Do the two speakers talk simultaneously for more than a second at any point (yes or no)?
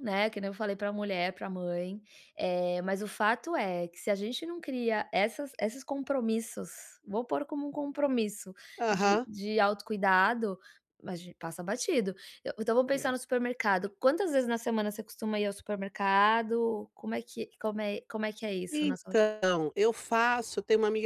no